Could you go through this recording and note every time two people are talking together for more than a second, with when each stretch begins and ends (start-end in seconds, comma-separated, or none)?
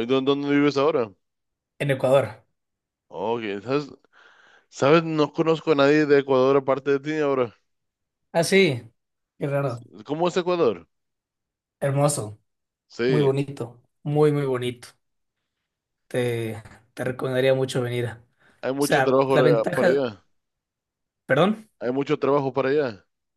18.8-20.0